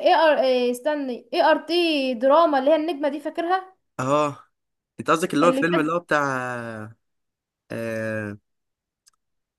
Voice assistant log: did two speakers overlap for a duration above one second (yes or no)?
no